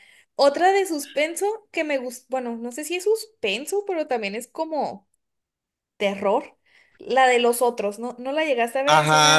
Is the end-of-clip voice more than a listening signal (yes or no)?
yes